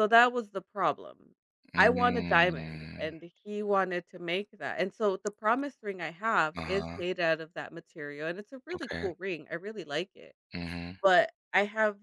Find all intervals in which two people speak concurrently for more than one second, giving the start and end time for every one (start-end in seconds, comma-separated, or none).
1.8-3.1